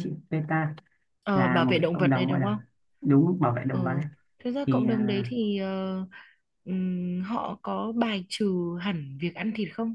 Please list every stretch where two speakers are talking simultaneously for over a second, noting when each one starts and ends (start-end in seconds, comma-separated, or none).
1.3-2.6